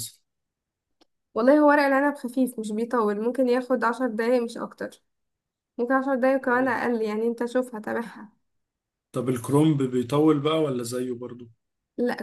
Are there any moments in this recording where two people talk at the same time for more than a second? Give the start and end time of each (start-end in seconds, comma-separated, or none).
none